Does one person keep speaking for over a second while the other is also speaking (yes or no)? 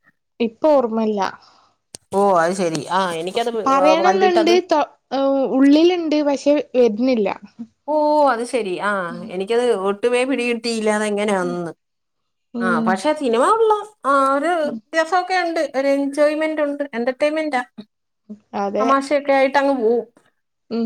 no